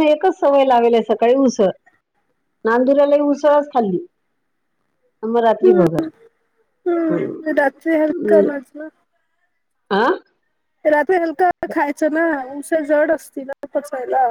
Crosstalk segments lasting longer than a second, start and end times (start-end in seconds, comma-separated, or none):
7.1-8.5